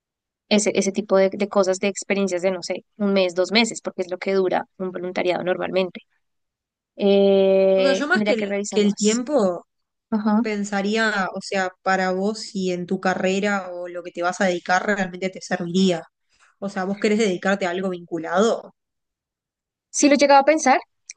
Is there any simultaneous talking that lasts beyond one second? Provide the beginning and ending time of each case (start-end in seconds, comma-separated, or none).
7.8-9.2